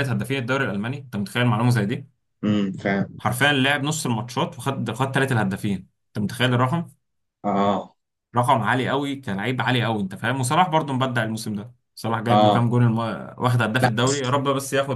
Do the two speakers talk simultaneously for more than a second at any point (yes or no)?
no